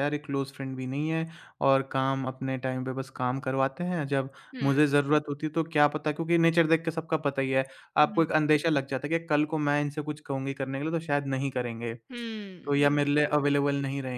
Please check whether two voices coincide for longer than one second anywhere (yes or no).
yes